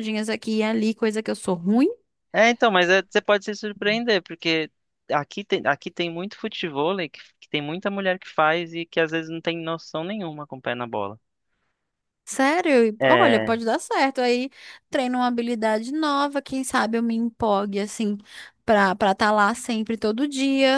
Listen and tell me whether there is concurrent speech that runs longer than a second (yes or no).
no